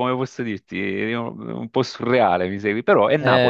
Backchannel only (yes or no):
no